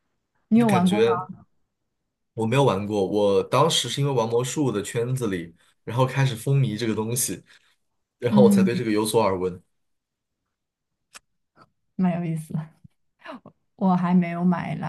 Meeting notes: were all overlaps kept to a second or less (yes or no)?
yes